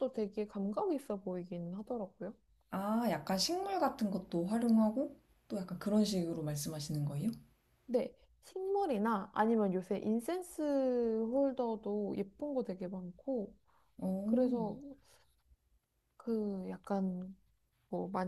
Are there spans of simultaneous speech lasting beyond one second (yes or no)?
no